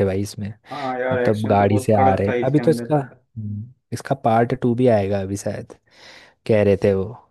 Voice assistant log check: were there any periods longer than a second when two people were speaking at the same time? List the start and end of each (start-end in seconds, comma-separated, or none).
1.1-2.9